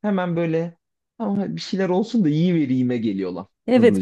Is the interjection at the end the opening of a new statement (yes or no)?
yes